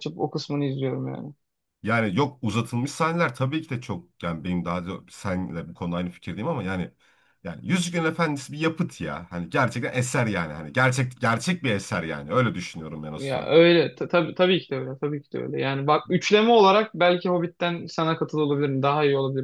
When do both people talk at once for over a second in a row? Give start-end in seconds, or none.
none